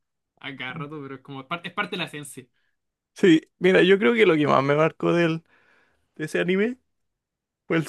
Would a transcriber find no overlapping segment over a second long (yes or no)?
yes